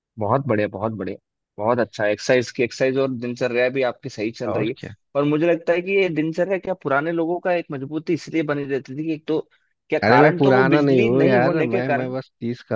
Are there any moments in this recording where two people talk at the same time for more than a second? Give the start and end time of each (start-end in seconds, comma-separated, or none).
10.0-12.1